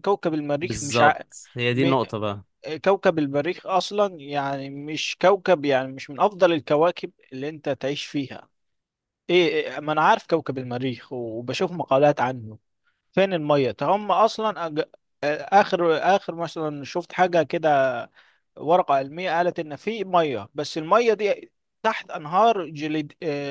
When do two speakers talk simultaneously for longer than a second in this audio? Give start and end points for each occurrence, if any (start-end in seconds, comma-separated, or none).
none